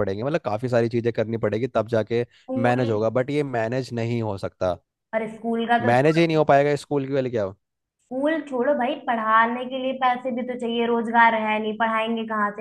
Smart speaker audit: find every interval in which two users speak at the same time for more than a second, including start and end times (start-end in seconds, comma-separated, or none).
none